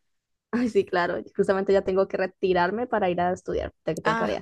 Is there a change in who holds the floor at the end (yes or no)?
yes